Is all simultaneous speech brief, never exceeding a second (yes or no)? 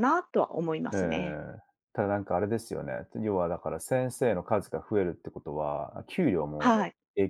yes